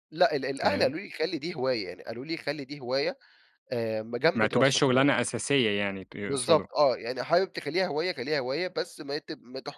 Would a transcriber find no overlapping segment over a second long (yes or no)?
yes